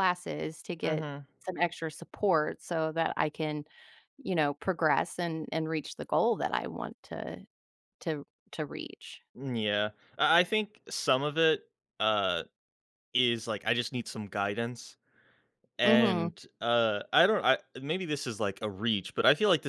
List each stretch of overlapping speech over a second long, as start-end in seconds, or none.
none